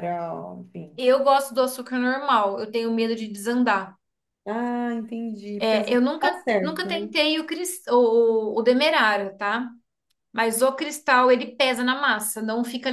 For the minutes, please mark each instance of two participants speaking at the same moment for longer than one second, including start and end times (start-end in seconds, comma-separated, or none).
5.6-7.1